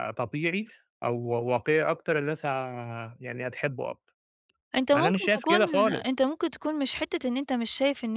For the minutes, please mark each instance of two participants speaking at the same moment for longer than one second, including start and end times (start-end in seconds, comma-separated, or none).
4.9-6.3